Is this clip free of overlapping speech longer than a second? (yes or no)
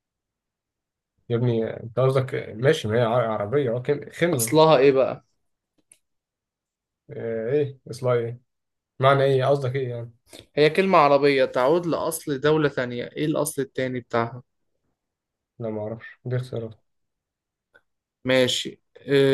yes